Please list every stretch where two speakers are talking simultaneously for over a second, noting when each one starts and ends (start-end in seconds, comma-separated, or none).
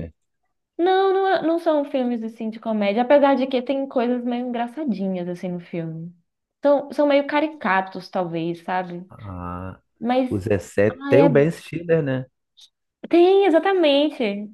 none